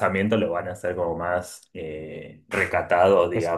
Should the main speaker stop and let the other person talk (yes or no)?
yes